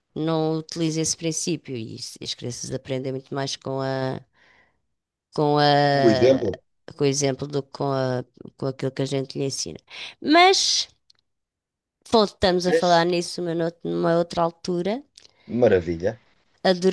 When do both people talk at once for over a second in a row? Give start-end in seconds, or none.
none